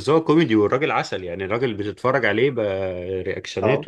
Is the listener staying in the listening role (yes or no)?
yes